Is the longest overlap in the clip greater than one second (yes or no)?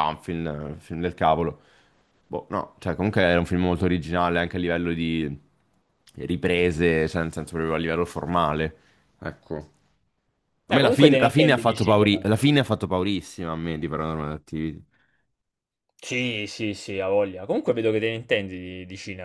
yes